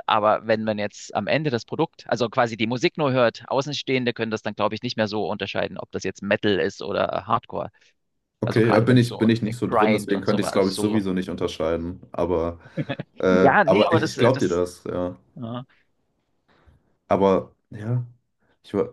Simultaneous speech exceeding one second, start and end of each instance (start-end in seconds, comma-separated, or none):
8.4-11.1, 13.4-14.6